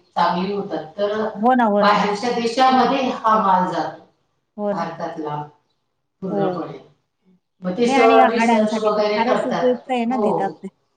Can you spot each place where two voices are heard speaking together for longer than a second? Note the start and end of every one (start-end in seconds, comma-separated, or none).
7.8-10.3